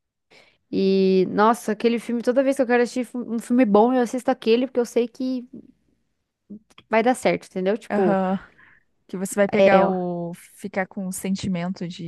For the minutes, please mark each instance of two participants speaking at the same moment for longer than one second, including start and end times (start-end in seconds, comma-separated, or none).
none